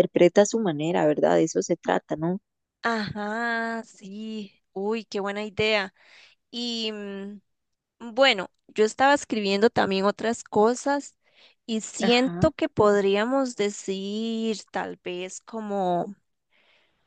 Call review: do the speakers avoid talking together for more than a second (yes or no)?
yes